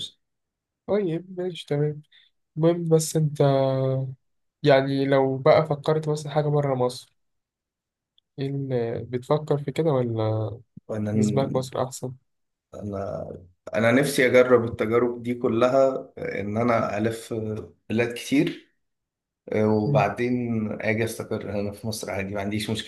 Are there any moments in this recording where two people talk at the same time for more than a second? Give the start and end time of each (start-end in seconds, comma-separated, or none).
none